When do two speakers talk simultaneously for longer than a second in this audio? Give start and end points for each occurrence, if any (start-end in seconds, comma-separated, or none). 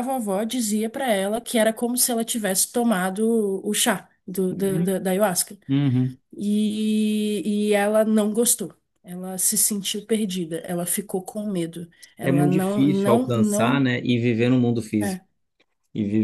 12.2-13.9